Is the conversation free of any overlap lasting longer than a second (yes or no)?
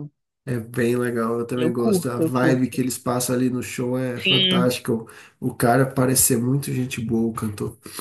no